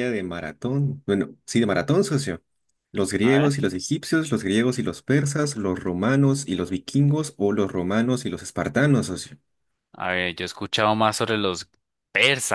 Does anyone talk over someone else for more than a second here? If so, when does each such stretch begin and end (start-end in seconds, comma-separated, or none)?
none